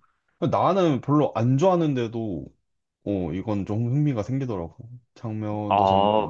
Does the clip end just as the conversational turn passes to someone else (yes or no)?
yes